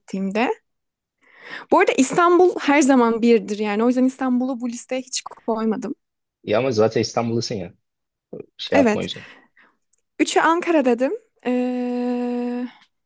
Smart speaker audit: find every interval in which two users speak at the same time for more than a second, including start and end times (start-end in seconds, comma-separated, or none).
none